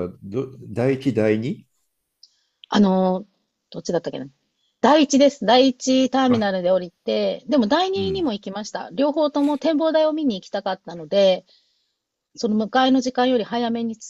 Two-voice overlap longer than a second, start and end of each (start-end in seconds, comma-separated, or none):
none